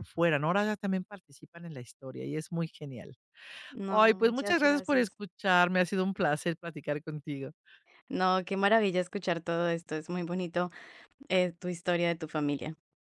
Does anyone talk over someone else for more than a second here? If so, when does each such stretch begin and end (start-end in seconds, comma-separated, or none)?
3.9-5.2